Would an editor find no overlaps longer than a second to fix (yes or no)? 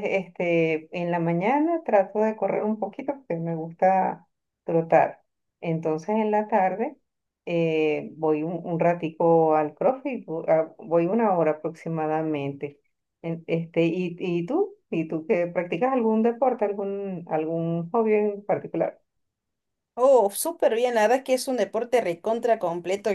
yes